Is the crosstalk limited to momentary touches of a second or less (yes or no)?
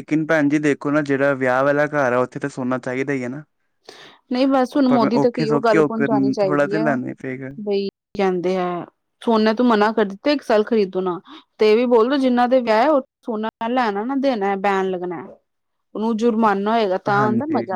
no